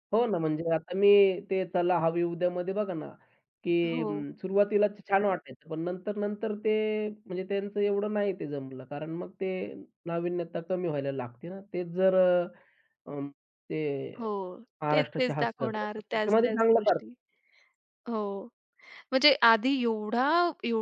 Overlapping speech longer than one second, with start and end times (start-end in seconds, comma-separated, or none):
14.9-17.1